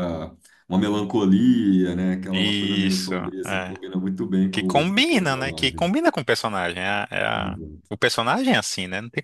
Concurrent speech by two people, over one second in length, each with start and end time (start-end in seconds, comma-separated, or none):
2.3-3.7, 4.5-5.9